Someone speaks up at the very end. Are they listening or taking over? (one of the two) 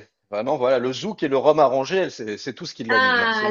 taking over